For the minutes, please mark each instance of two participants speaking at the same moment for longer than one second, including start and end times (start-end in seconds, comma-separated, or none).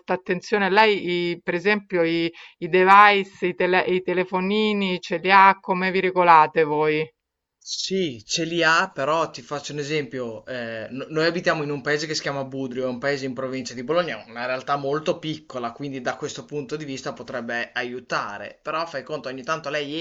none